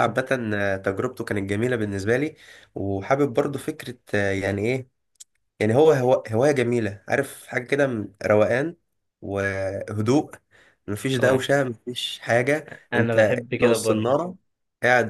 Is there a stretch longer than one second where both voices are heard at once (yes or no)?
yes